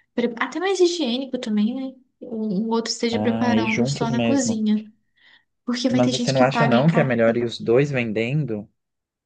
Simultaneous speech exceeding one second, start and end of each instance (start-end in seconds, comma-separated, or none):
3.1-4.6, 5.9-7.3